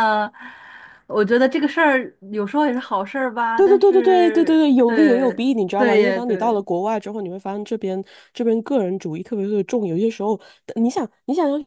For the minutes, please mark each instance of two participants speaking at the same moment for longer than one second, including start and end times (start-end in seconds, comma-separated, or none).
3.5-6.6